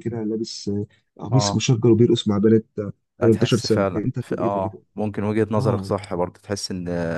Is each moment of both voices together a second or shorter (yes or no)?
no